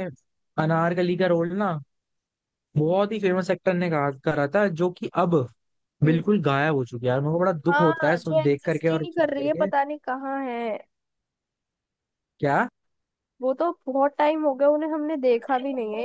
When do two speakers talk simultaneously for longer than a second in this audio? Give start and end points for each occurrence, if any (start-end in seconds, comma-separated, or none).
7.7-9.7